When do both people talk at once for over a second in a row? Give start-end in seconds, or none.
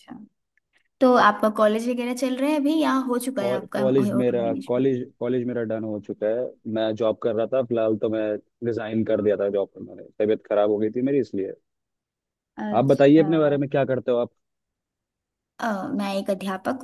3.4-4.8